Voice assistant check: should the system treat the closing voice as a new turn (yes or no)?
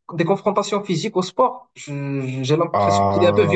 yes